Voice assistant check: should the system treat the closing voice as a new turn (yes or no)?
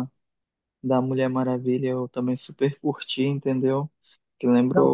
yes